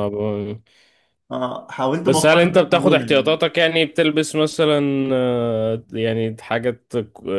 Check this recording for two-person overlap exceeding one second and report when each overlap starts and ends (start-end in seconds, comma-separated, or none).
2.0-3.4